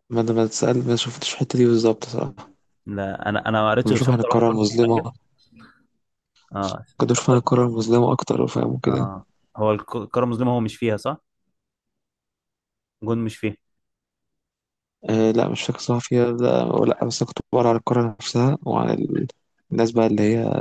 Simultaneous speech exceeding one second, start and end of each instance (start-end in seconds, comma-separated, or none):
3.8-5.1